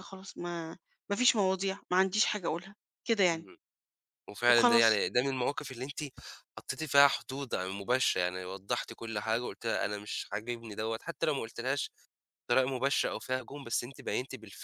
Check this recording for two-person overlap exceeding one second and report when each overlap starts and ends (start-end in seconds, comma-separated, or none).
none